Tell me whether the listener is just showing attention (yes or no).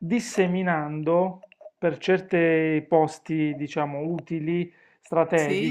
yes